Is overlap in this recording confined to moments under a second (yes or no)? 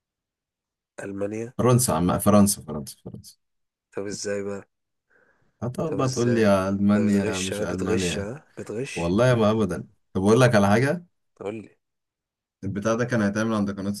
no